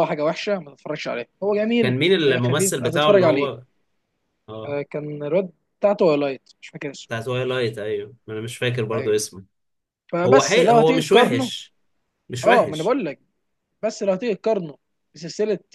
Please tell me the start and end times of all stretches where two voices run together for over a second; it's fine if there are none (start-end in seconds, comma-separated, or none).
1.8-3.5, 10.2-11.5